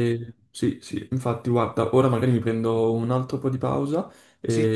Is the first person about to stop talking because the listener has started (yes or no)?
no